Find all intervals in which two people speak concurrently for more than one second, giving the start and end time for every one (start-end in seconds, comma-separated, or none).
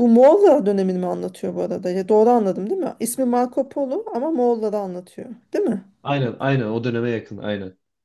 none